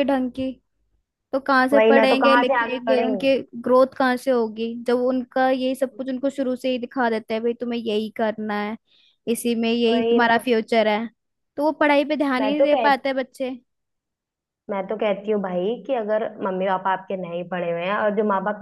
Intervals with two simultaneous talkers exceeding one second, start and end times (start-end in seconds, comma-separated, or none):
1.7-3.3